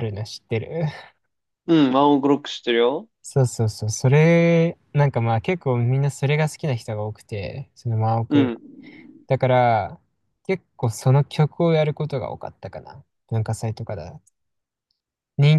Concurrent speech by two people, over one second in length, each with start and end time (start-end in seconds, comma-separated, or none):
none